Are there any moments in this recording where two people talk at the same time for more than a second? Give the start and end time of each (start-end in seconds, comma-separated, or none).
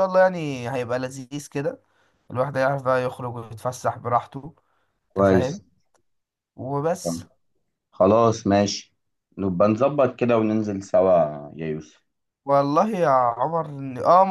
none